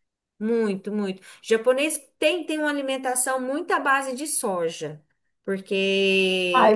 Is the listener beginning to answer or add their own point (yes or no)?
yes